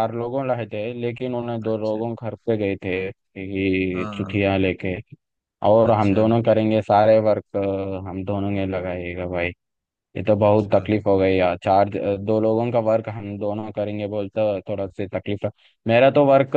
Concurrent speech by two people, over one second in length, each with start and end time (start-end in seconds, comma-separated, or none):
none